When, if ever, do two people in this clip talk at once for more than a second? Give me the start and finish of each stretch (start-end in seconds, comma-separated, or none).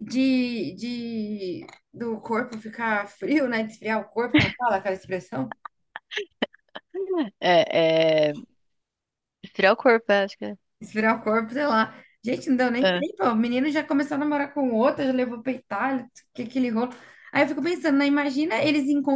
none